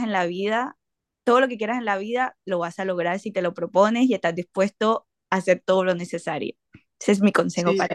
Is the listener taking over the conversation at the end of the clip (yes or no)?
yes